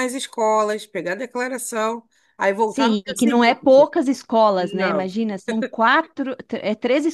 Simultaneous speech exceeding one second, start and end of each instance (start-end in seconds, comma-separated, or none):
2.6-3.9